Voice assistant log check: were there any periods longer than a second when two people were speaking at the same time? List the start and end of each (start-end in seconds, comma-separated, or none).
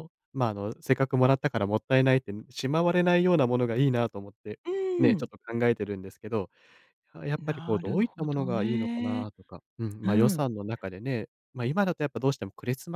7.4-9.3